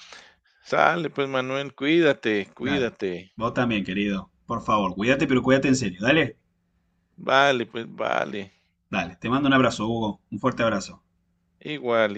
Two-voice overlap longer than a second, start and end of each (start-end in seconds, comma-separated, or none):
none